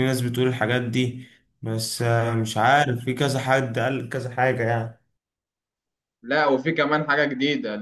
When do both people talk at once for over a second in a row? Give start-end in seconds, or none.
none